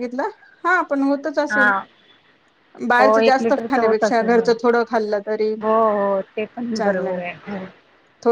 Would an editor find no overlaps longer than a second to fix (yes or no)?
no